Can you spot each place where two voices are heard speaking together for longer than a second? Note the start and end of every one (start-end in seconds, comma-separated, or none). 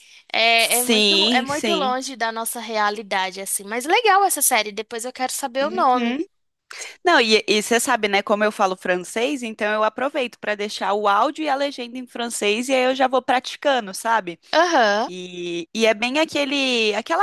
0.6-2.0